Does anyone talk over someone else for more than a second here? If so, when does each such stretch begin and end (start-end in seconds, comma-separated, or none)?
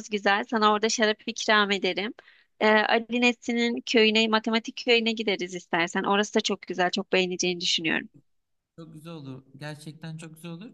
none